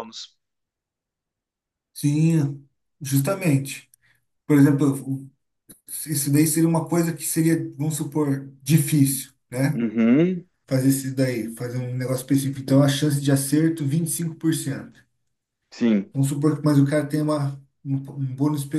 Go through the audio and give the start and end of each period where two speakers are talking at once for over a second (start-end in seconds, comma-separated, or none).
none